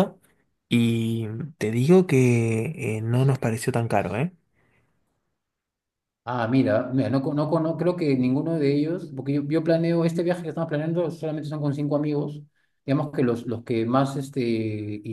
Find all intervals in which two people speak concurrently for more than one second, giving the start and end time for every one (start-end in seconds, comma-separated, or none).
none